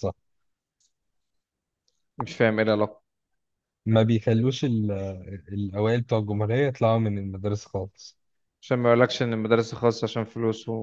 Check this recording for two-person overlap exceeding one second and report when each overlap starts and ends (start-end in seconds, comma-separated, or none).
none